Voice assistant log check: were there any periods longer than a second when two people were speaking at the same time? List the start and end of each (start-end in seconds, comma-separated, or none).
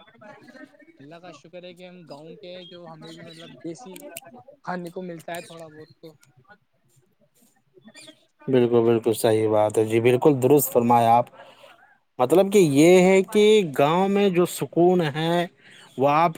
none